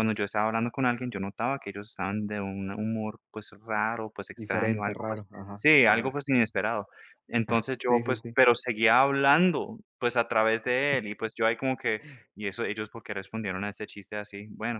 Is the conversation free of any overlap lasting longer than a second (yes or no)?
no